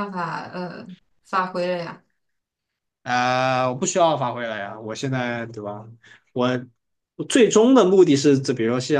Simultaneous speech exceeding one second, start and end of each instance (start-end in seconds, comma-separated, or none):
none